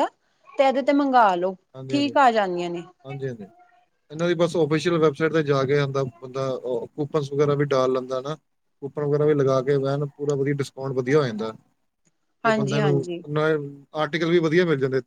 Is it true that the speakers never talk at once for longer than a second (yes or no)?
yes